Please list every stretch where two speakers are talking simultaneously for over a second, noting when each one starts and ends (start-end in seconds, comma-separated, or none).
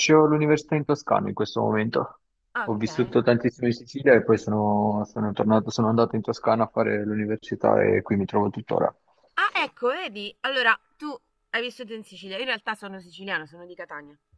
none